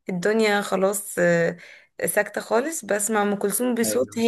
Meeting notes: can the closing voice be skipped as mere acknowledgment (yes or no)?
yes